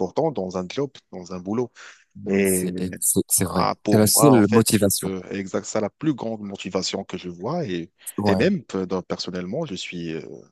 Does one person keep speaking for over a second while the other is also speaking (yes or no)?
yes